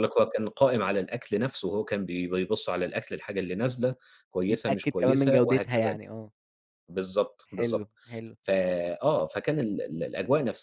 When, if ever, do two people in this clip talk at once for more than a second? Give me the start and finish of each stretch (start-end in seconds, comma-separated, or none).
4.5-6.0